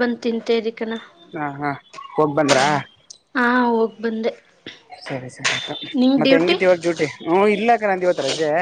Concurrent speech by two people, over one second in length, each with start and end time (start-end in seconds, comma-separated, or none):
none